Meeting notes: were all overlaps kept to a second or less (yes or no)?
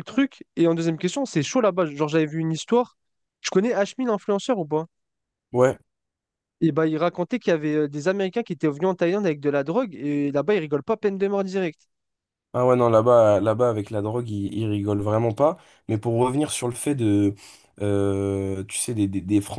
yes